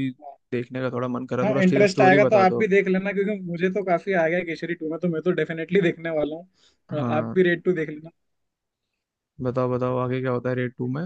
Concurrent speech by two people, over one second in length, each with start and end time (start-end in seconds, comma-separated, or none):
1.4-2.7